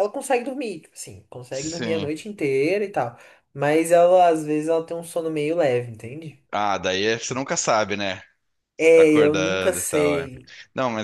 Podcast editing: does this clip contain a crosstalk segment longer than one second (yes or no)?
yes